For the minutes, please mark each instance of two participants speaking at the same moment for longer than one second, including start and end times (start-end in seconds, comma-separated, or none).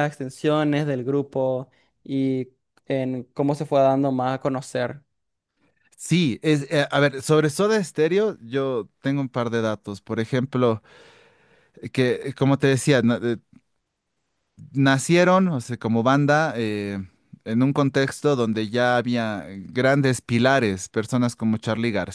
none